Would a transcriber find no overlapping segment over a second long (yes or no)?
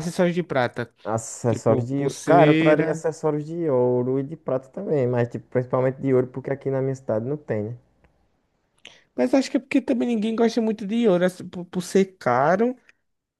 no